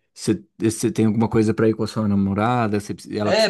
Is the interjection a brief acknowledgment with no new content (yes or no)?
no